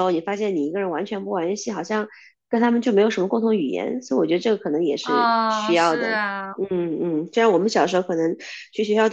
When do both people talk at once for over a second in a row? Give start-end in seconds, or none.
5.0-6.2